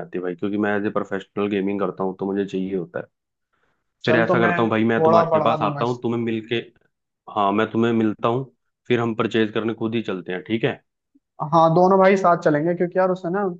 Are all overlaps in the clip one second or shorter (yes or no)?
no